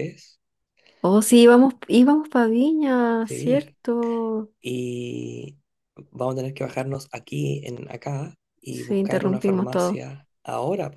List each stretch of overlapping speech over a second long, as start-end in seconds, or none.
8.7-10.0